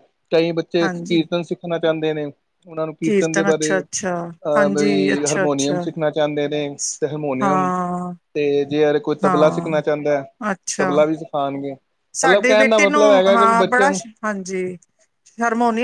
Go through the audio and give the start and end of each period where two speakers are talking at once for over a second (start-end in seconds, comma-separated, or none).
4.6-5.8, 12.2-14.0